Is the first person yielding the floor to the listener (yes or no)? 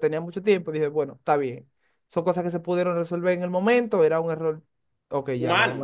yes